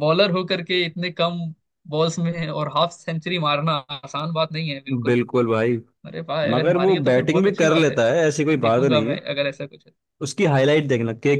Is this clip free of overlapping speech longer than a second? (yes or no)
no